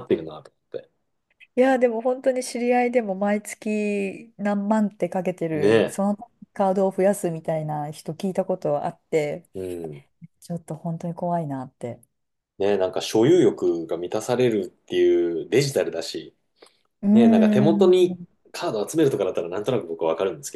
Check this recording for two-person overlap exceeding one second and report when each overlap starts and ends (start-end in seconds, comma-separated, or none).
17.1-18.3